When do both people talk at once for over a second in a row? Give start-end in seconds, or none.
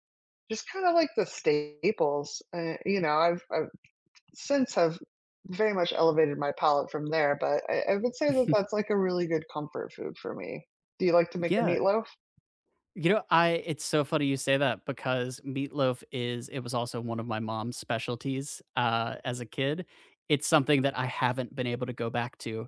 none